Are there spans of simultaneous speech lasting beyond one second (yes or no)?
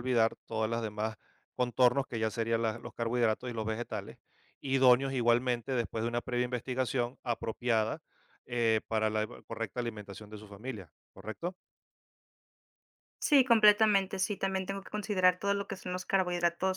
no